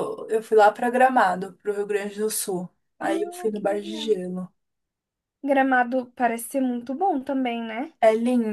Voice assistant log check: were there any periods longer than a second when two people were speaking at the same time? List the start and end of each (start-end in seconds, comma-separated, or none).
3.0-4.2